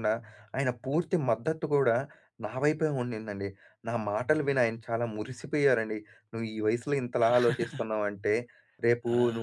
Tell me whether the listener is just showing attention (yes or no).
yes